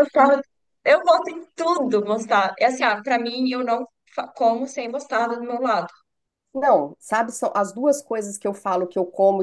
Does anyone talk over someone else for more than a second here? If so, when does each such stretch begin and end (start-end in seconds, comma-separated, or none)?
none